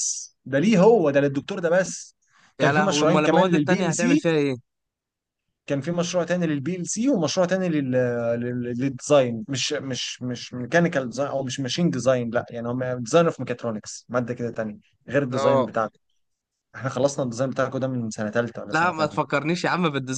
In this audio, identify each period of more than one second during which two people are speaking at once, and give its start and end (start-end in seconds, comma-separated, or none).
2.6-4.3